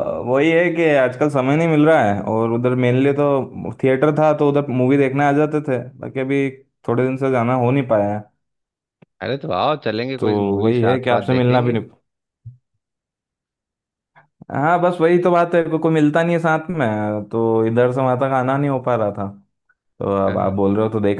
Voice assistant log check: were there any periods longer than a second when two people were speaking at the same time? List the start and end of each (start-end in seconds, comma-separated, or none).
10.2-11.8